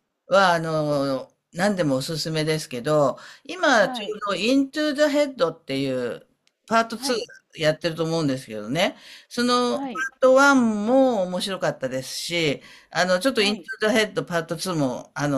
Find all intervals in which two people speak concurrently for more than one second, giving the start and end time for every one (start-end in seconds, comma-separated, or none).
none